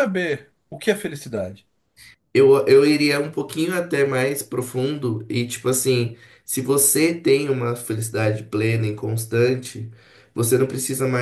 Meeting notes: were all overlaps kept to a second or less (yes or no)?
yes